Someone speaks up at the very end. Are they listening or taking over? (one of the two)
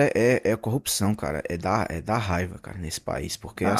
listening